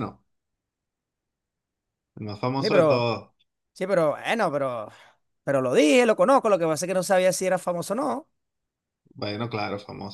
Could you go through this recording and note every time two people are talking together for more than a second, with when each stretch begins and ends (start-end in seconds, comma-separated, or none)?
none